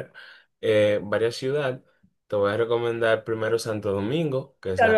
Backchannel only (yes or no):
no